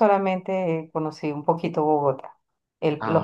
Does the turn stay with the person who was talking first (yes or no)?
yes